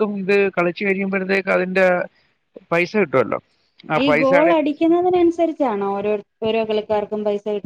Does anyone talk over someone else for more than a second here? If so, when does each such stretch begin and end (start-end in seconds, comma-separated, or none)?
none